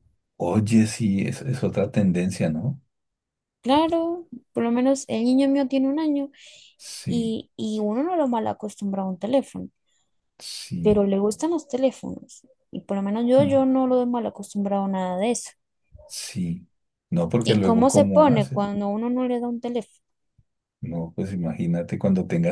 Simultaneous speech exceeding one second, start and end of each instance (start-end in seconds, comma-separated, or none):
17.4-18.7